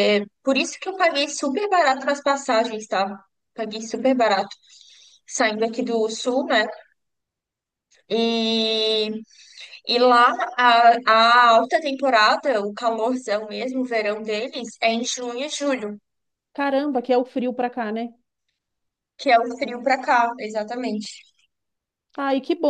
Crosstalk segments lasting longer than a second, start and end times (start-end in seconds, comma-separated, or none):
none